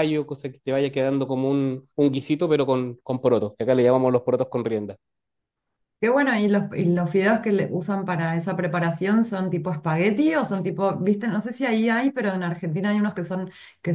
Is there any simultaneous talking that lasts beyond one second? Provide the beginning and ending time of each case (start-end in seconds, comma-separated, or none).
none